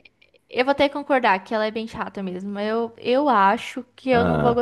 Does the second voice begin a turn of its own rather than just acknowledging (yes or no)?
no